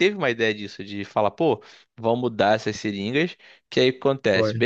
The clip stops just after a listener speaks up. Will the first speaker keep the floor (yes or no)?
yes